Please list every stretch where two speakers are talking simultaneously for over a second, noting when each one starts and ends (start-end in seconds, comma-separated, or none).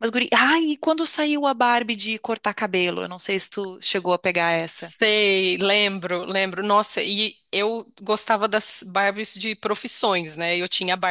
none